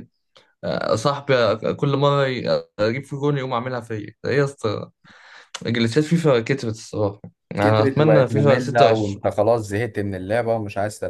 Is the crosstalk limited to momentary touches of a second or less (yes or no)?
no